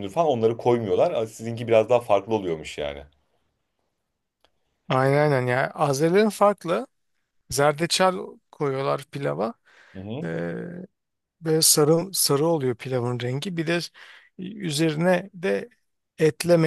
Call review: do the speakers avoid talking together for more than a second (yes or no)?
yes